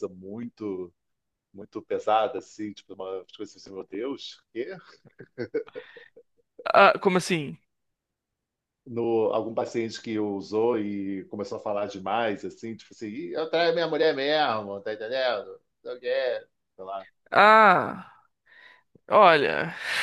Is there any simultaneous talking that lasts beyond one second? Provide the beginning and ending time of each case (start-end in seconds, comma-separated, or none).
none